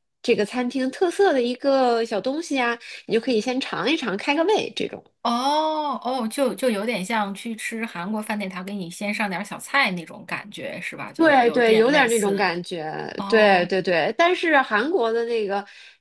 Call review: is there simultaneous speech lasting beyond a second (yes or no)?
yes